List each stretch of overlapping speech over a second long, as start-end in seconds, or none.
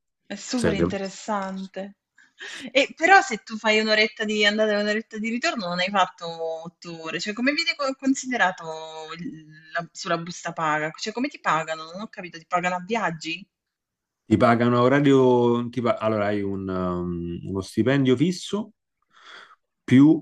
none